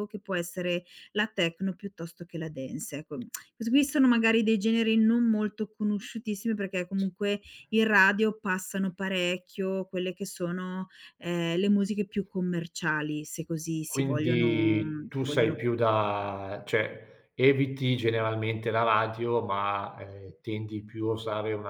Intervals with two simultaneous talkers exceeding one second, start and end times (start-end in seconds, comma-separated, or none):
13.9-15.6